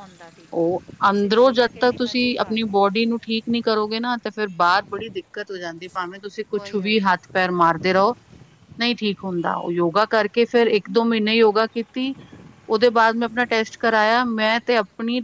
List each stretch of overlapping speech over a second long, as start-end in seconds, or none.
0.5-3.0